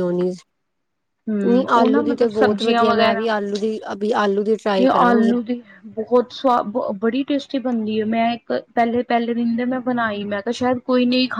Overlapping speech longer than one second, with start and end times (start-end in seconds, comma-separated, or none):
1.5-2.9